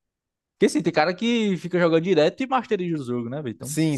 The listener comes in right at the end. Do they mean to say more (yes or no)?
yes